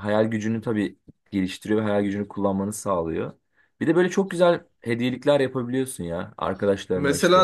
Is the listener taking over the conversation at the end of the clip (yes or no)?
yes